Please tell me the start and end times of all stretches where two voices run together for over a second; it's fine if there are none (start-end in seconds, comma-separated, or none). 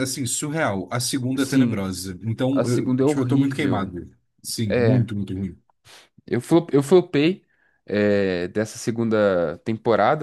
2.5-4.0